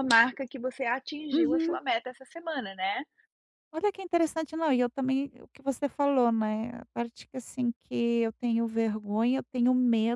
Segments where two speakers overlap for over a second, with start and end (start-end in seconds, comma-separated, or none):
none